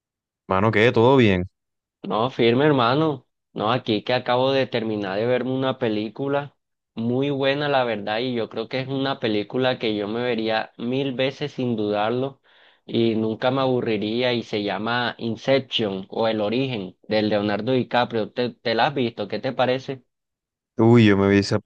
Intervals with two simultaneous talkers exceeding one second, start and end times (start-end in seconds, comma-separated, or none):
none